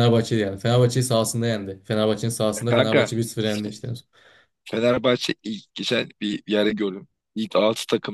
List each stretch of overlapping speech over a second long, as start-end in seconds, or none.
none